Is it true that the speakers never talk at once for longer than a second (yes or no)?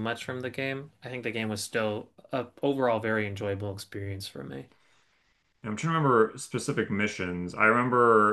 yes